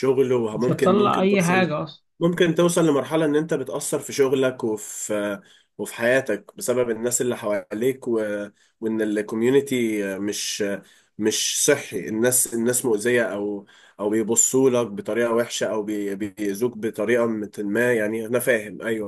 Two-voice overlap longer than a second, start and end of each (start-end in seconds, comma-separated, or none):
0.5-1.7